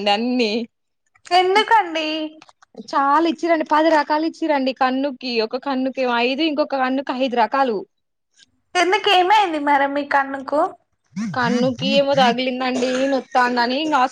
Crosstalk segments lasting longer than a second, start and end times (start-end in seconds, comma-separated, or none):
none